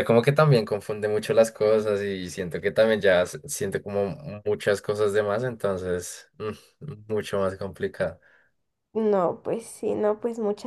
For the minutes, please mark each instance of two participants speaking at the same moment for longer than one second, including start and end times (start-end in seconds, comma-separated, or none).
none